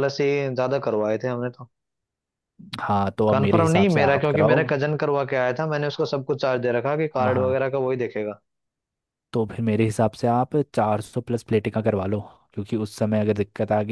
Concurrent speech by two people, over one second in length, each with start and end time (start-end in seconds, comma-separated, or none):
3.3-4.6